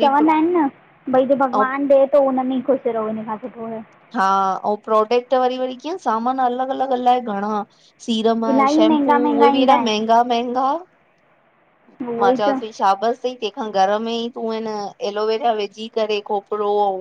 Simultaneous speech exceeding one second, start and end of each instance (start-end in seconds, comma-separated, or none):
8.5-10.2